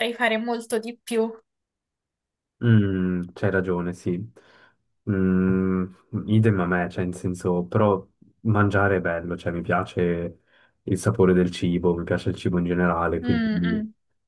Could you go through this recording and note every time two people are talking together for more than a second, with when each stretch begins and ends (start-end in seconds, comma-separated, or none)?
none